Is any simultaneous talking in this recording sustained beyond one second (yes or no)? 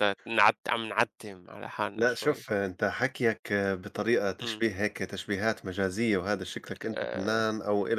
no